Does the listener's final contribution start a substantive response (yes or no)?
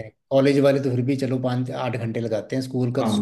yes